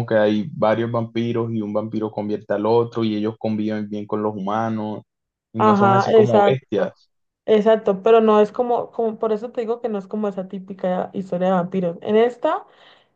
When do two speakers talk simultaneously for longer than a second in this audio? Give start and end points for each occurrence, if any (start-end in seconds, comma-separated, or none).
5.6-6.9